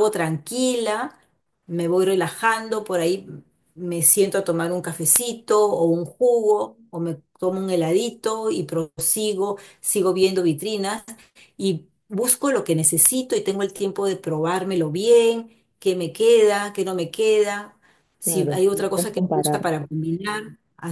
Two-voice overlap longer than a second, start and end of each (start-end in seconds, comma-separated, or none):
18.2-19.8